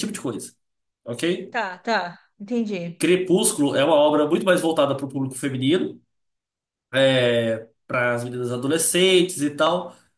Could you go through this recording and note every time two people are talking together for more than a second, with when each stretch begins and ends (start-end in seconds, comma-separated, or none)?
none